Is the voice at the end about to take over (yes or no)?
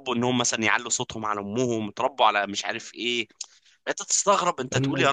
yes